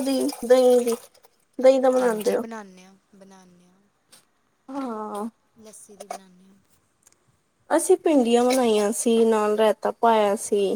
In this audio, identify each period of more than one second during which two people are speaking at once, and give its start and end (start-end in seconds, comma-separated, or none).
none